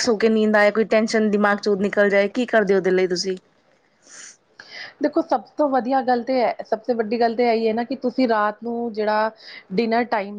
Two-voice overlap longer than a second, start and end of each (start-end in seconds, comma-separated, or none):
none